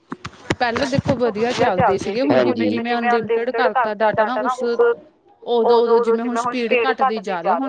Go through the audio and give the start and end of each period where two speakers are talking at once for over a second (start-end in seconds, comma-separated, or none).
none